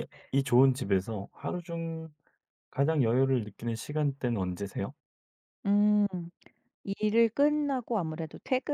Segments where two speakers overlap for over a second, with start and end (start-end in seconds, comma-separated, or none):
none